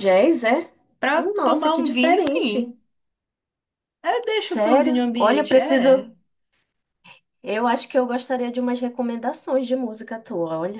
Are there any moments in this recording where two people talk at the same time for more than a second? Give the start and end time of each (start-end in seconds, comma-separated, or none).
1.1-2.7, 4.3-6.1